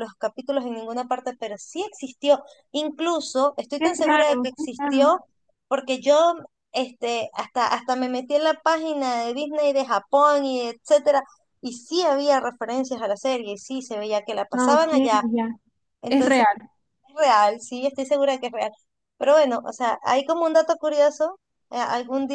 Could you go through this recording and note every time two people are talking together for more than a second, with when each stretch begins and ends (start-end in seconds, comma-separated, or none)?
3.8-5.1